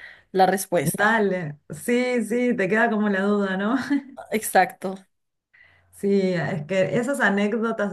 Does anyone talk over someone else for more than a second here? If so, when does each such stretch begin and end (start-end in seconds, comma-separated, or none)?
none